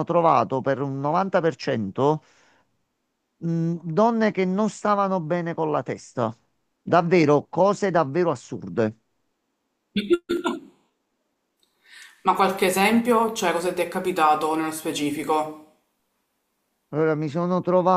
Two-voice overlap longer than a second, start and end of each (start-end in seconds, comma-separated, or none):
none